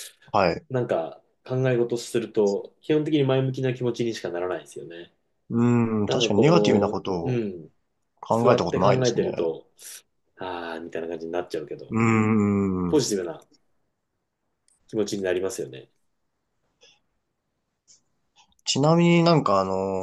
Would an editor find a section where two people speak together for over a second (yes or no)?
yes